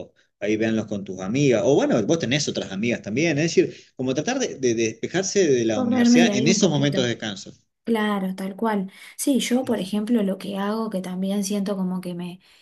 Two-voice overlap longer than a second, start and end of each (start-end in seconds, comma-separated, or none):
5.7-7.1